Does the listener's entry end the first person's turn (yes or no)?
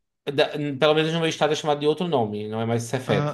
yes